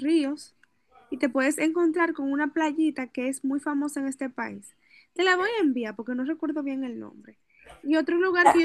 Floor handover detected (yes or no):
no